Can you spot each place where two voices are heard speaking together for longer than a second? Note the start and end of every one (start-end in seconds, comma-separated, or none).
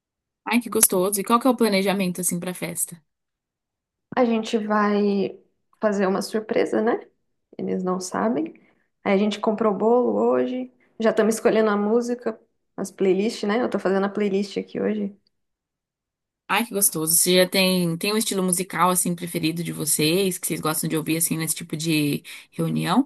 none